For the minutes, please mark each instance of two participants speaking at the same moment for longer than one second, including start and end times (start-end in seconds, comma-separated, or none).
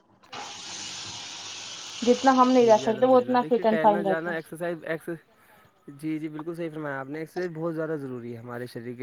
2.6-4.5